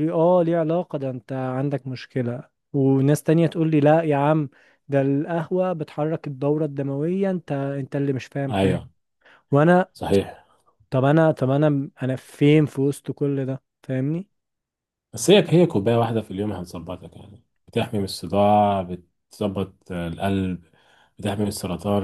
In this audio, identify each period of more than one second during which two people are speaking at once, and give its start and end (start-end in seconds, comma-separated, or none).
none